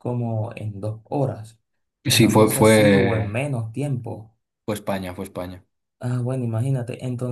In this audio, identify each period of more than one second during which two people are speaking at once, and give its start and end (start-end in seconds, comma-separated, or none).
2.1-3.4